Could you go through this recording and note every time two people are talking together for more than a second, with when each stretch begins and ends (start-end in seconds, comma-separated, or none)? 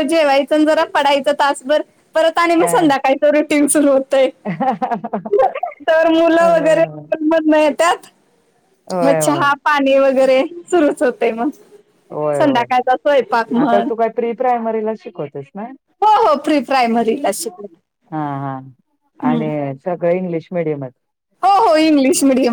none